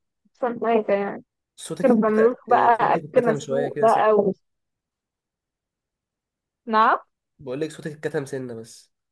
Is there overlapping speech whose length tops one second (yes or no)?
yes